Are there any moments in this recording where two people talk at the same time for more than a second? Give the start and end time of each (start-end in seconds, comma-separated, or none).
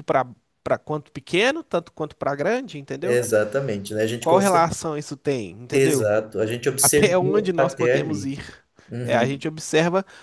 6.8-8.3